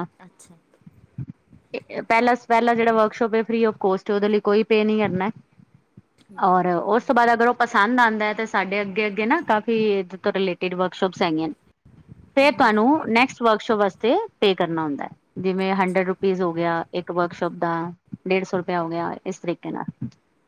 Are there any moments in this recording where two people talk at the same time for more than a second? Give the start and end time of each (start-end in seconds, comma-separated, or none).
none